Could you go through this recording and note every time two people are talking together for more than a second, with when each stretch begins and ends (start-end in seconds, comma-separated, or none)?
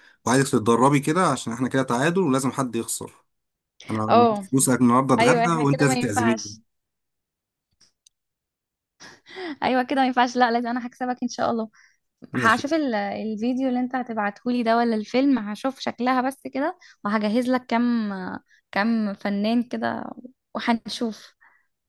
5.2-6.6